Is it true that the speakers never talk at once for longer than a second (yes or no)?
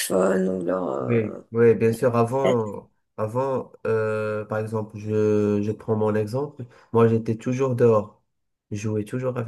yes